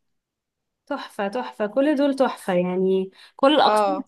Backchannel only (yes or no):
yes